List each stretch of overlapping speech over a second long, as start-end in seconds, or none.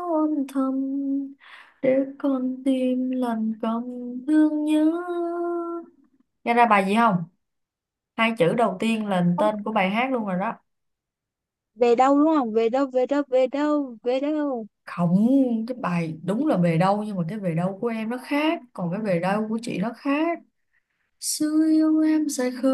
none